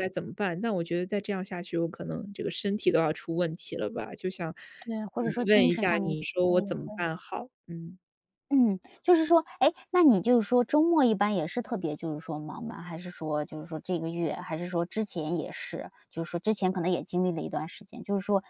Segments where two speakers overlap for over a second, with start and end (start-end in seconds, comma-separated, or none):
5.2-7.1